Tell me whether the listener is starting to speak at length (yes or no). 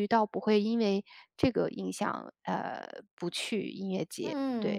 yes